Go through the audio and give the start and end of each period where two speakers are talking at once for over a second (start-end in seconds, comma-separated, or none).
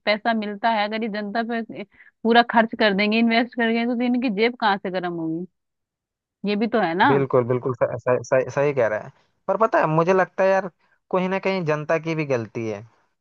none